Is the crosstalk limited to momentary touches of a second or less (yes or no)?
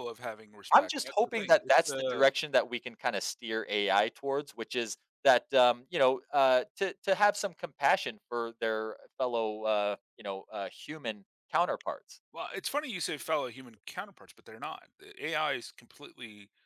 no